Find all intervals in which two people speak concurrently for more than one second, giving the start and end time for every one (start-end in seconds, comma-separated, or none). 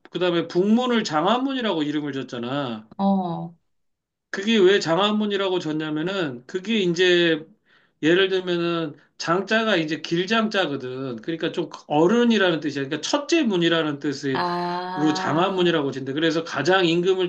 14.3-15.7